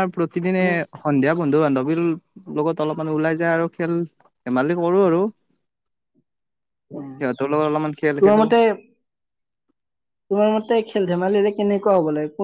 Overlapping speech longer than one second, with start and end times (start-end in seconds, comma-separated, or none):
7.1-8.4